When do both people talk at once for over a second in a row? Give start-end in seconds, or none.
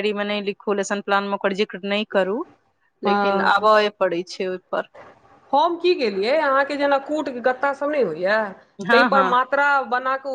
none